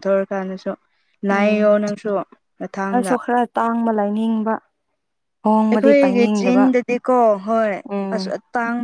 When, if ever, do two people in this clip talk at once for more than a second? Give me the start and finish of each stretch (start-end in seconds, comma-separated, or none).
none